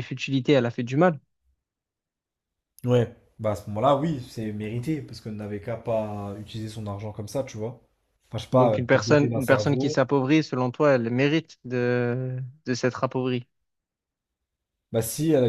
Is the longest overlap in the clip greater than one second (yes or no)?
yes